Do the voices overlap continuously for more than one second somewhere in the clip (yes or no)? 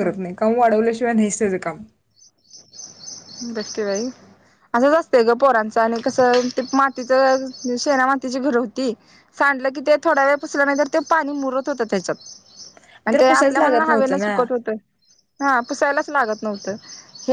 yes